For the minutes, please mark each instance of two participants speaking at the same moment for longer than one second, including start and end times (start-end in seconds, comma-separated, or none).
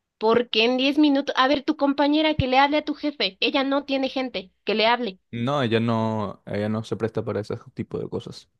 none